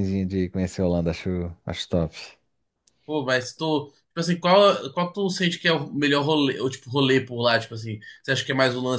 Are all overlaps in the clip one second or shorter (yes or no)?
yes